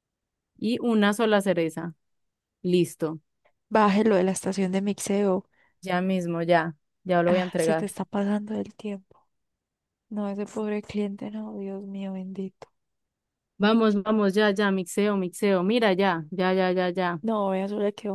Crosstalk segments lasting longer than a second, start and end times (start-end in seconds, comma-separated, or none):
none